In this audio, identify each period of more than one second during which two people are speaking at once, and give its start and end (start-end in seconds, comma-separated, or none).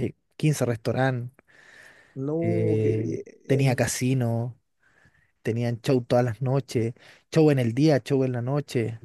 2.4-3.8